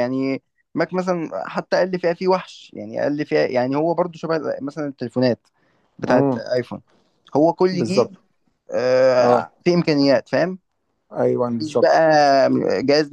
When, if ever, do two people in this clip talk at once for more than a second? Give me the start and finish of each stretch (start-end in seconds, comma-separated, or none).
none